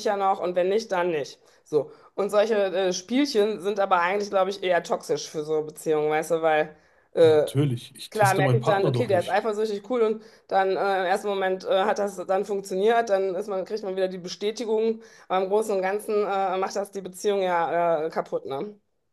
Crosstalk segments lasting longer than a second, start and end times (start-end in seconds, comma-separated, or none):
8.1-9.4